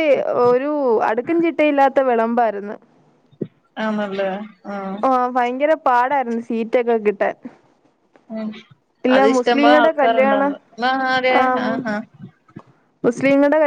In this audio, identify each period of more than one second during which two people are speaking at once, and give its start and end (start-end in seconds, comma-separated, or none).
9.2-10.5